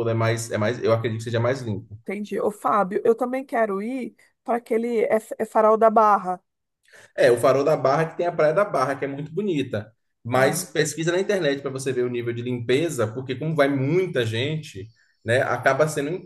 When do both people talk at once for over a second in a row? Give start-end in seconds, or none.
none